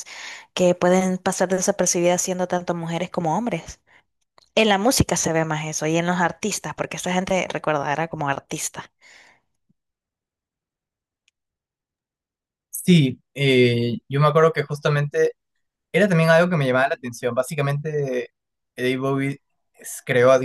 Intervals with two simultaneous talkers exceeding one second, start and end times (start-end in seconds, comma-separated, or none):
none